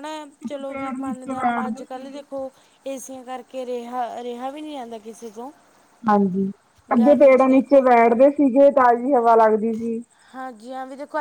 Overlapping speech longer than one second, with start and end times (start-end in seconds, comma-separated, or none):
0.7-2.2